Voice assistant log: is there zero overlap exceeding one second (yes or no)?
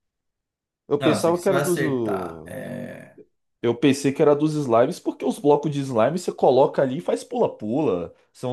no